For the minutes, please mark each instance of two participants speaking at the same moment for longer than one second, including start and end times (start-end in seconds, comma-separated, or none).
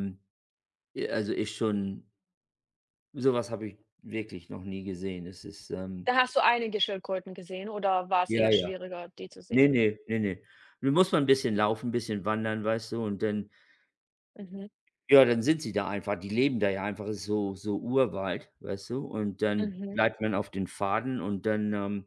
none